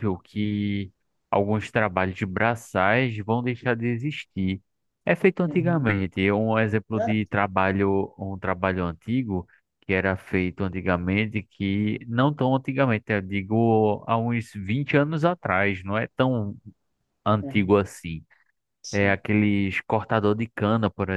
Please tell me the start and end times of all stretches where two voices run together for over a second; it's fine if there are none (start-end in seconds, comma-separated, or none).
none